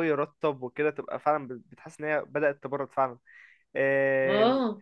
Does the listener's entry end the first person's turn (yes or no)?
no